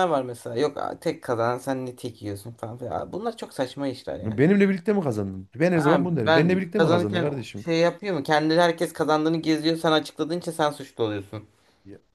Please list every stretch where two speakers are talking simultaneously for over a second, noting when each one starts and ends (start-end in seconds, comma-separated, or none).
5.8-7.7